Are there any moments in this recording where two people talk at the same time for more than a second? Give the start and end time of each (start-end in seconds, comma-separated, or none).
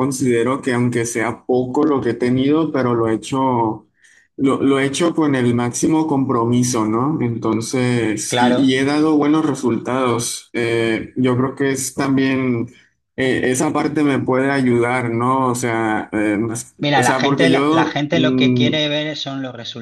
16.8-18.7